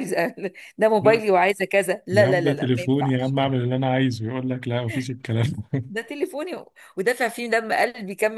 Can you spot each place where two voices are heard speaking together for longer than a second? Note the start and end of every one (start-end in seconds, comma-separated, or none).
2.1-3.4